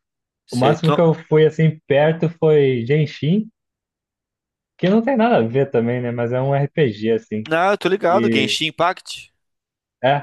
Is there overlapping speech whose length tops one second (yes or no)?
no